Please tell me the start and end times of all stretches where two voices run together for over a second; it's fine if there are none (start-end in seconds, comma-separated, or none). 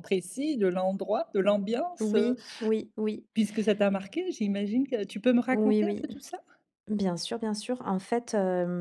none